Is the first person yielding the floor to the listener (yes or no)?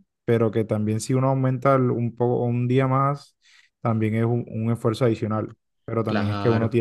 no